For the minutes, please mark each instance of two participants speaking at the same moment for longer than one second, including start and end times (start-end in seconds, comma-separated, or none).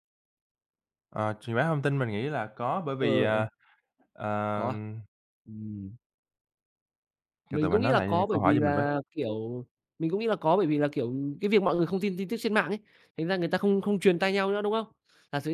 7.5-8.8